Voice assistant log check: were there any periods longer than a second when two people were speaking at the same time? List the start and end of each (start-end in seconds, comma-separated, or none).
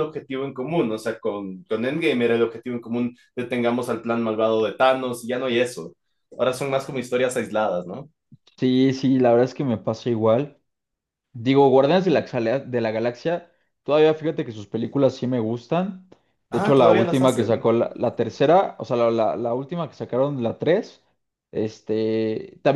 16.5-17.7